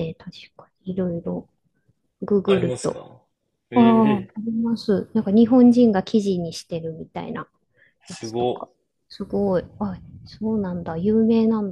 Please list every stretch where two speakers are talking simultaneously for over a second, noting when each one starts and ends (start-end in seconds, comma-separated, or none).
none